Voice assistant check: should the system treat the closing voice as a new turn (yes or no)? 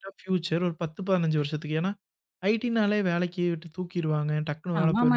yes